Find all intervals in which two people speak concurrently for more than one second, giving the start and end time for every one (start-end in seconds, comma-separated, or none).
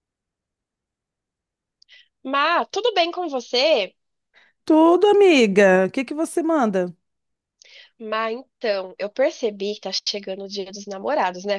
none